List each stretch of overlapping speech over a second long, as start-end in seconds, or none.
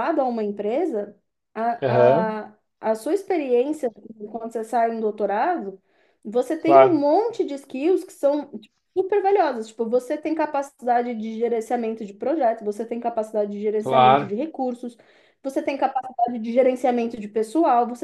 none